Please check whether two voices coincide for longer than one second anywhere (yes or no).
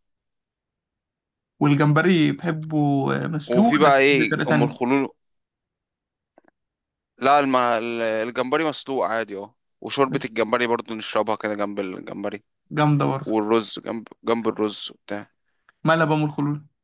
yes